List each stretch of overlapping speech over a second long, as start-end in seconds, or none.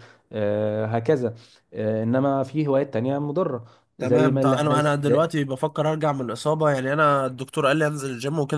4.0-5.3